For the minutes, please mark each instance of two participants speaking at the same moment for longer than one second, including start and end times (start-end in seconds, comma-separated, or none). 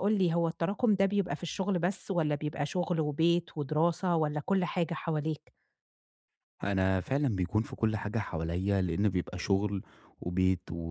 none